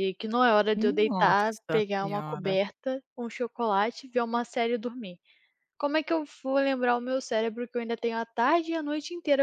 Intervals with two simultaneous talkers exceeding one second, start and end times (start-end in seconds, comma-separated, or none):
0.8-2.6